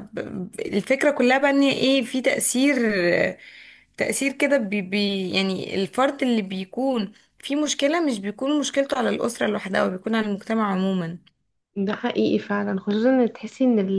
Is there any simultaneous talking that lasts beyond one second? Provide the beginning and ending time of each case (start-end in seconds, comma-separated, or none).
none